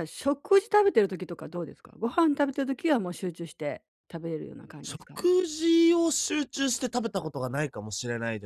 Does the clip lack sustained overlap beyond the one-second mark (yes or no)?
yes